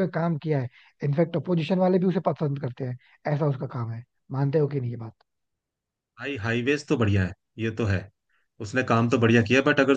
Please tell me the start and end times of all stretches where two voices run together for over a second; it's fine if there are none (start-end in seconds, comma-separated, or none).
none